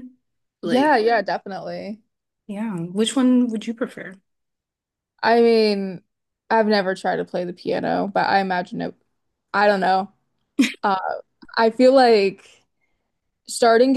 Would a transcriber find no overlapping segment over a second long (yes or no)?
yes